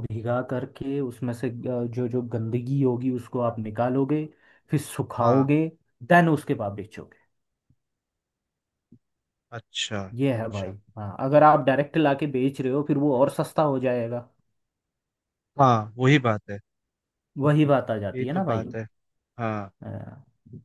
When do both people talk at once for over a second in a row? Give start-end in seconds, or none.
none